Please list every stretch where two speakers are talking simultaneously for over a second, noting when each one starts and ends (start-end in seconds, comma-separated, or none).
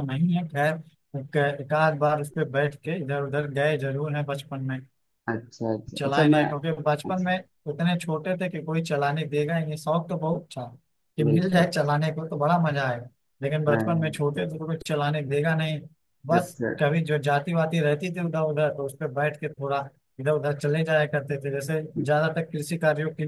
none